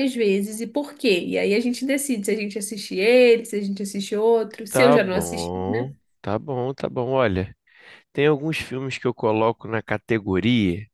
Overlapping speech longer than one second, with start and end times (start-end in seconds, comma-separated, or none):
4.7-5.9